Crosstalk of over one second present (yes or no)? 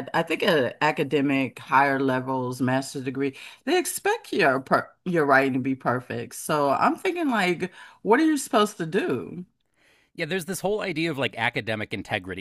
no